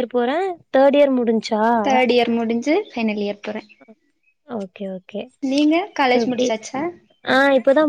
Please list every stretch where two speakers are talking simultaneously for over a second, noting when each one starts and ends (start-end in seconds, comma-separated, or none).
none